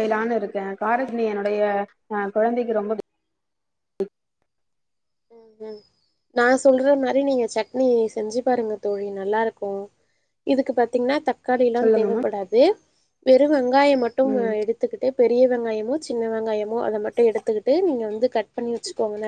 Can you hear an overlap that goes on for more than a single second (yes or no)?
no